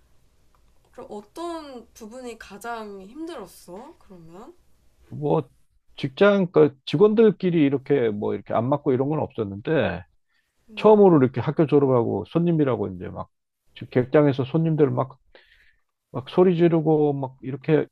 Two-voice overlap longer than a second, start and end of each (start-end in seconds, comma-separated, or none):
none